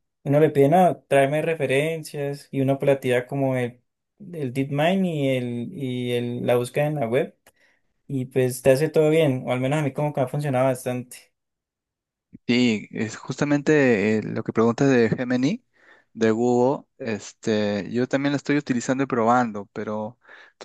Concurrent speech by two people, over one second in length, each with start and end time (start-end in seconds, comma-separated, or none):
none